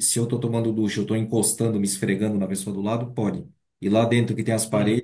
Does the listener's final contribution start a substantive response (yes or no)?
no